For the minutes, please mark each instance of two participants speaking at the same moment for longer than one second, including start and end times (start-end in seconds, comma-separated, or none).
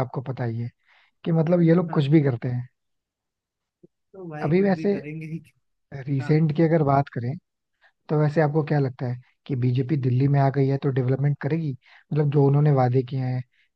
none